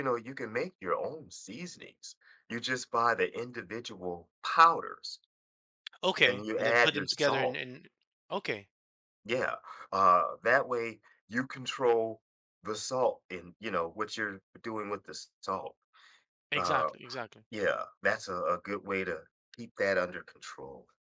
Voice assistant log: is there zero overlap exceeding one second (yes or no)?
no